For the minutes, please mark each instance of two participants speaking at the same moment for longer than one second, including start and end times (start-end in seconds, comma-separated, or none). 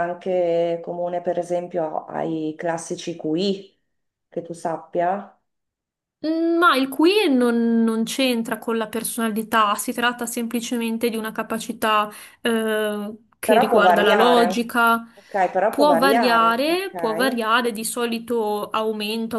13.4-14.8, 15.7-17.4